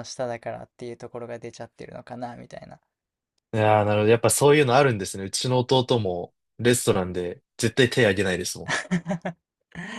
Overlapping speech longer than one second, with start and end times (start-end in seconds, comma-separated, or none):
none